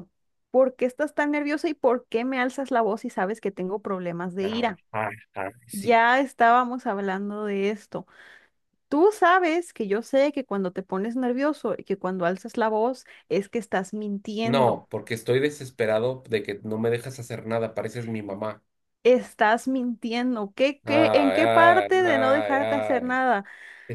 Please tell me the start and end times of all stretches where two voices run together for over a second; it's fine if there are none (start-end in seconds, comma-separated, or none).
20.8-23.2